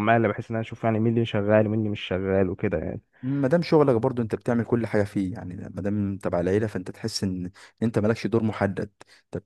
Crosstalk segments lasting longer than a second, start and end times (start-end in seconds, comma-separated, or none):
none